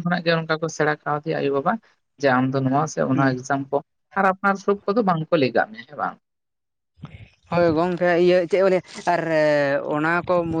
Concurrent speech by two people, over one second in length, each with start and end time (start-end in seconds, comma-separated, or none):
none